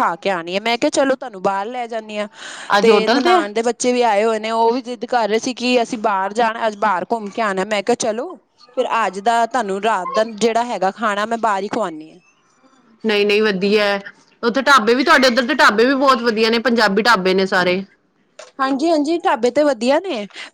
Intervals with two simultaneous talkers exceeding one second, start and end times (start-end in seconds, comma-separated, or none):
none